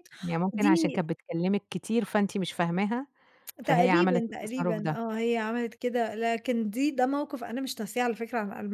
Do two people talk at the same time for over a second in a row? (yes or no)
yes